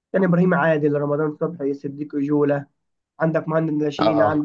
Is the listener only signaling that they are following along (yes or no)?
yes